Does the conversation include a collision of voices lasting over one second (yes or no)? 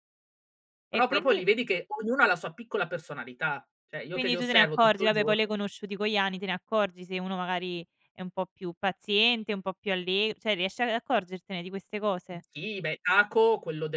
yes